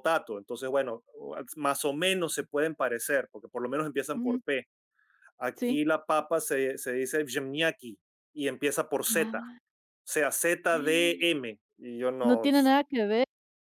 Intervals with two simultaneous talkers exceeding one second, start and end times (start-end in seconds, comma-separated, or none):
none